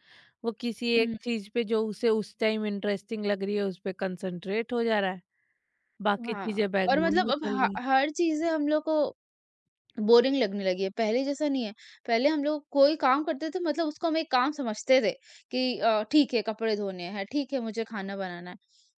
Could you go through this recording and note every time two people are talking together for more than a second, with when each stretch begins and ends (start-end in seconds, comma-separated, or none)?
6.3-7.8